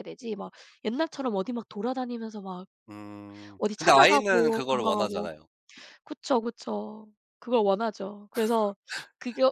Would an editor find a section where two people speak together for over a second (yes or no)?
yes